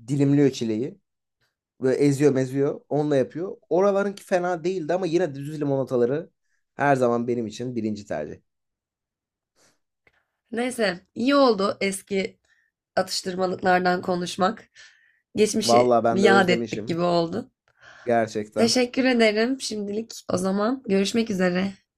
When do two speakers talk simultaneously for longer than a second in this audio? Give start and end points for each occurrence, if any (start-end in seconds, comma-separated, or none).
15.6-17.0